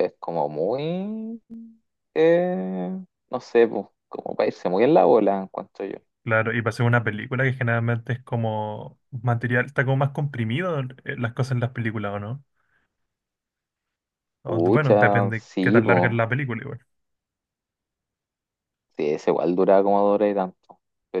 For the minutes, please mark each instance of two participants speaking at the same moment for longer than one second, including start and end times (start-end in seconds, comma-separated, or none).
14.5-16.2